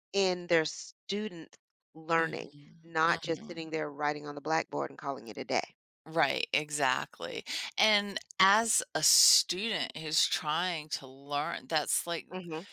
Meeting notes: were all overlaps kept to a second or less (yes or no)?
no